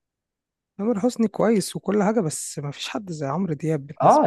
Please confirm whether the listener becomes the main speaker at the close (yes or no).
yes